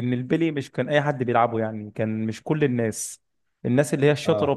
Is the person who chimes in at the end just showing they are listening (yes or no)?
yes